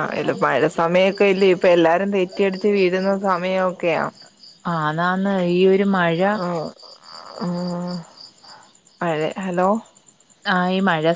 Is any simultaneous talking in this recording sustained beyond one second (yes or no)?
no